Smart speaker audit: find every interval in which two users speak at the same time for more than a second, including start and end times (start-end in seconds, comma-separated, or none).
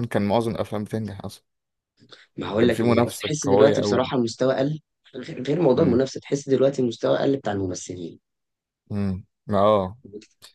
2.6-4.1